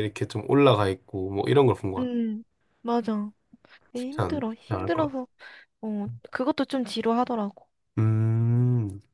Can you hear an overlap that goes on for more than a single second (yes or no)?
yes